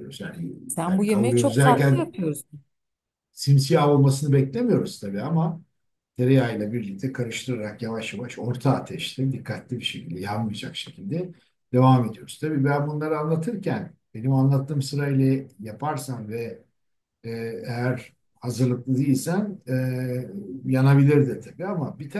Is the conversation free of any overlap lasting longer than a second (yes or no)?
no